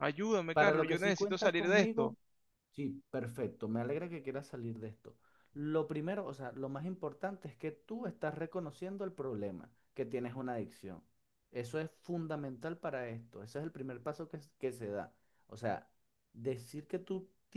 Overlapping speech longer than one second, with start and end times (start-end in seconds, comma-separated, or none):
0.5-2.1